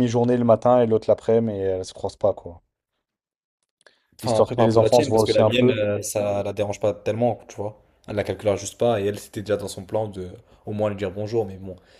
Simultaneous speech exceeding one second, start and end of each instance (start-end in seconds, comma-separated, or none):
4.2-5.8